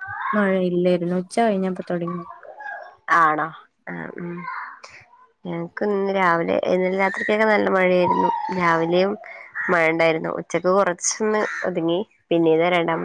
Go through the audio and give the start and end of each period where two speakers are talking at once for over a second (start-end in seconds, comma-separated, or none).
none